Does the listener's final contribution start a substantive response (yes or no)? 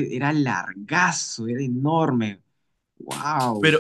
yes